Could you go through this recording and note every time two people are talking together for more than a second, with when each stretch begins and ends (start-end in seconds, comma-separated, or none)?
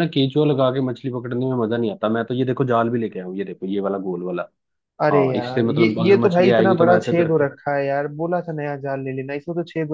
5.1-7.4